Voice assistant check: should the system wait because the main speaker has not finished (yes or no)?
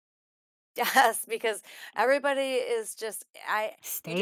no